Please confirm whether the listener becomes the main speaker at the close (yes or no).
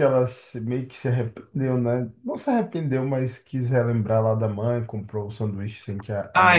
yes